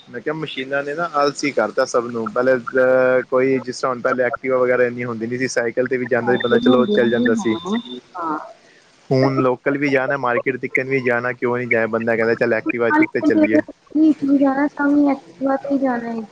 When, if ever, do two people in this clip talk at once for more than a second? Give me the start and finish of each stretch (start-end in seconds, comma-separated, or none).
6.2-7.6